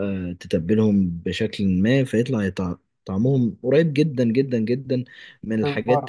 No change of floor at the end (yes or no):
yes